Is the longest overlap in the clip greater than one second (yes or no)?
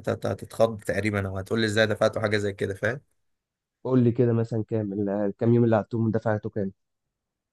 no